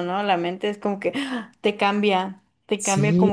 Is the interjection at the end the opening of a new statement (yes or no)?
no